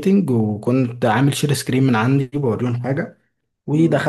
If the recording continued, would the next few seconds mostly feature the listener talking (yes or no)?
no